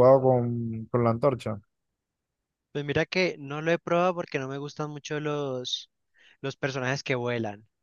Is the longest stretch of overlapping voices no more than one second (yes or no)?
yes